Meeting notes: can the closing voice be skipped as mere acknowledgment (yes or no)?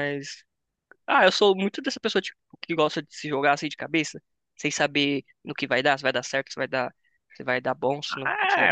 no